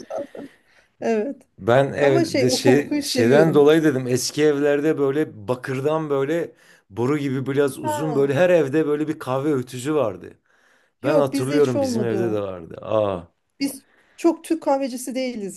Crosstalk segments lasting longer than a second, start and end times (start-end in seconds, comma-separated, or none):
2.0-3.7, 11.0-12.4